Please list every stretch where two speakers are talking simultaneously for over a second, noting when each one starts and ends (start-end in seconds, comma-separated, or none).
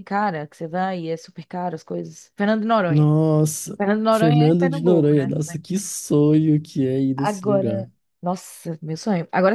3.8-5.3